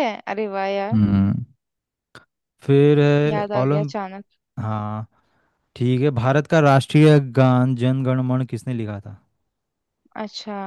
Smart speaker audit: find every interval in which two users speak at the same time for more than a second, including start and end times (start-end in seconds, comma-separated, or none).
none